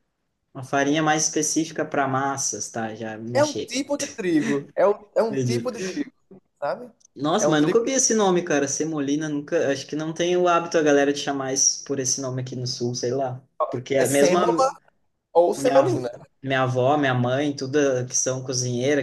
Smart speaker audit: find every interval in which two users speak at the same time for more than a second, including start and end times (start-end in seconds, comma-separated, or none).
none